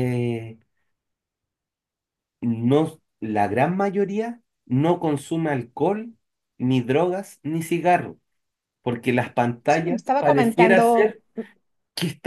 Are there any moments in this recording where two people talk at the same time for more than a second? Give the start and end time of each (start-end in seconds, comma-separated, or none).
9.7-11.2